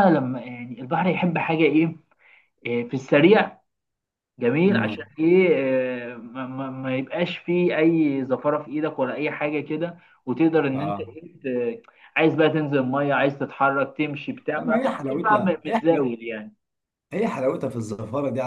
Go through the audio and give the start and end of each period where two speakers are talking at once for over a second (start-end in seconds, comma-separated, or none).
14.6-16.0